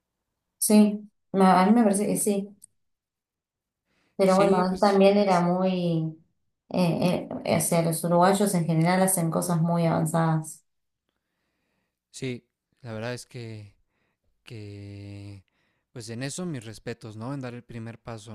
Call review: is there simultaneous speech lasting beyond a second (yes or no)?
yes